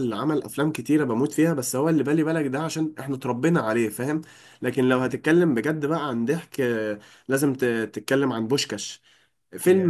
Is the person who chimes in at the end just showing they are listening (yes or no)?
yes